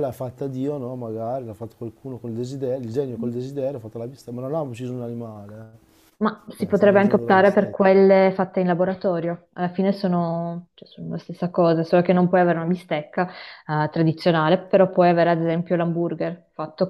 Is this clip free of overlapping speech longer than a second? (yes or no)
no